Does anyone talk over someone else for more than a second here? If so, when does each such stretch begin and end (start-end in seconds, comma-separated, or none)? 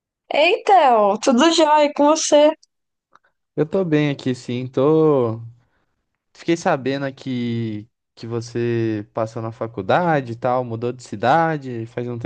none